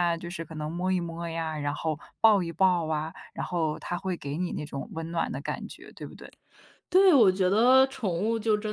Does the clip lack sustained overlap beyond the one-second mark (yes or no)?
yes